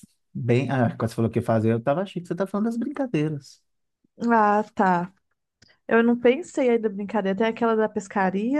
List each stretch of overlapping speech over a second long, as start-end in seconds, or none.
none